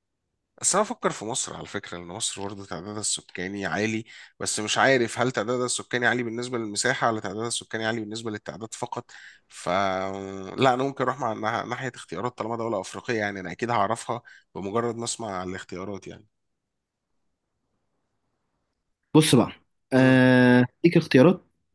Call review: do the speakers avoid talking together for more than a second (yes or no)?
yes